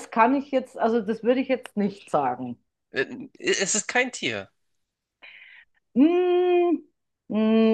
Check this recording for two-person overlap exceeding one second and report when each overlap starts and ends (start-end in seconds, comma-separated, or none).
none